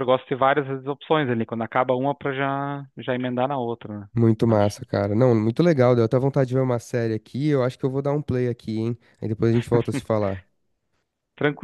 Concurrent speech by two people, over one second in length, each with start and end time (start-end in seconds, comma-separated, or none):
none